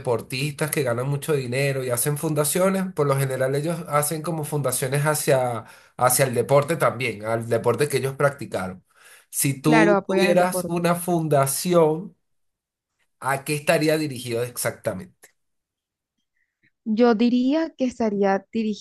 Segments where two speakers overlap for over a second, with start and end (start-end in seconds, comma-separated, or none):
9.6-10.9